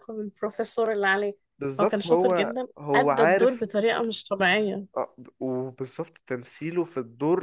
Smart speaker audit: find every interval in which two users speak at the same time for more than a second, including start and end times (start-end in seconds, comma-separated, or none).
1.8-3.6